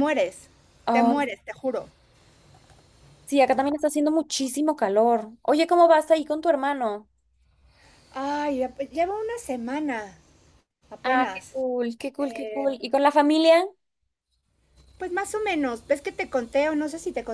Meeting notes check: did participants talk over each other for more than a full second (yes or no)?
no